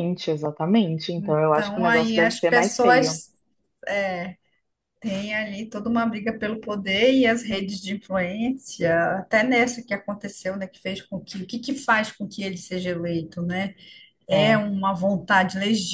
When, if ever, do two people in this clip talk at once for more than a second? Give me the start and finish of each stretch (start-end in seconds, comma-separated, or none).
1.5-3.2